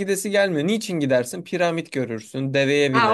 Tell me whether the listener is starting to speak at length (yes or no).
yes